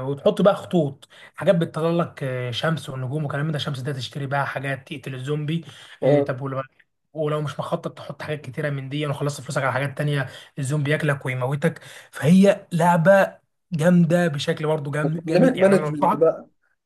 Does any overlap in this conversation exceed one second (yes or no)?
yes